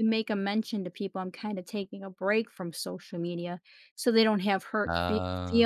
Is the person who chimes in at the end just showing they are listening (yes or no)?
yes